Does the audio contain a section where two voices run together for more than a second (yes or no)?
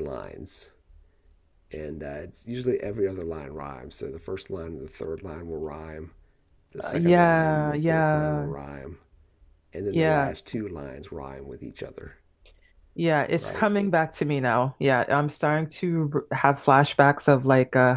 yes